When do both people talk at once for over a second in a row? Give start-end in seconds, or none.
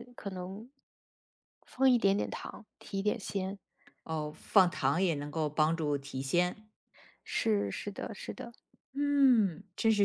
none